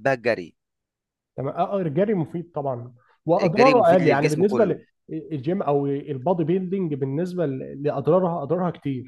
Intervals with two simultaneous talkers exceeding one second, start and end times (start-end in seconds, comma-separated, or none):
3.4-4.8